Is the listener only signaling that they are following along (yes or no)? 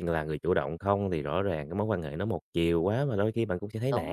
no